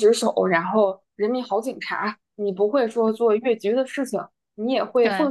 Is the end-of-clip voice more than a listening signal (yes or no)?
no